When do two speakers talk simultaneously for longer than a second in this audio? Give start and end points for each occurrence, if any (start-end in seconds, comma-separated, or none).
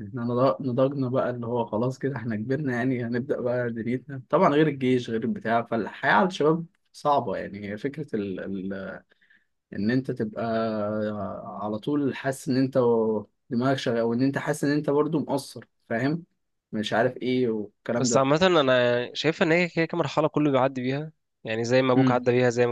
none